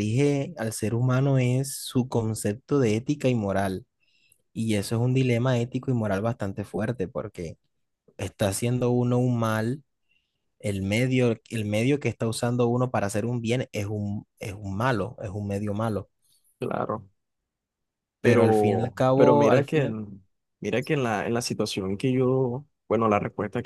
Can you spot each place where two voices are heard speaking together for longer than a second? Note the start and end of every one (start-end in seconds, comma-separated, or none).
18.2-20.0